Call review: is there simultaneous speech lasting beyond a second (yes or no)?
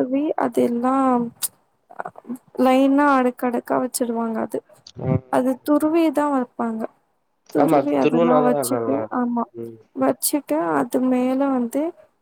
yes